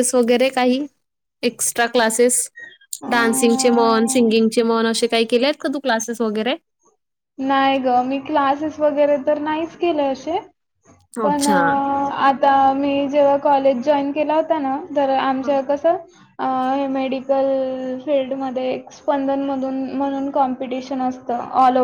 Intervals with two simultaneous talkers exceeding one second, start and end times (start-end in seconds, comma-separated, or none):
none